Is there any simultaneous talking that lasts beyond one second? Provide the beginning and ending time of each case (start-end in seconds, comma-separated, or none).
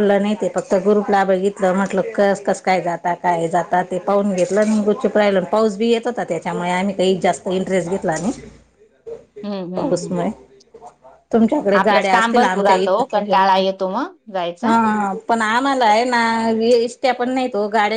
11.8-13.1